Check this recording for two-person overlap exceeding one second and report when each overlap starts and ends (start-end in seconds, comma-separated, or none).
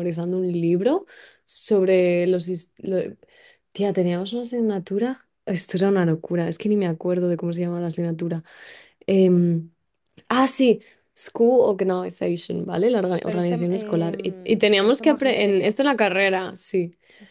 13.2-15.8